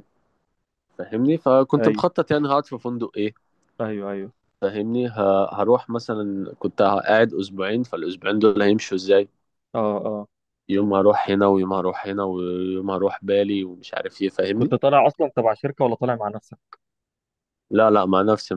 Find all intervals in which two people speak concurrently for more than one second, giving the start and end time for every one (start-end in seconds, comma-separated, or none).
none